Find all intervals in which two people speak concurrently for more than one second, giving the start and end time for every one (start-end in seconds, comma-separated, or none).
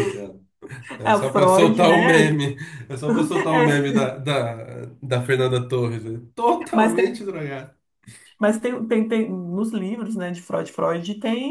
1.0-2.4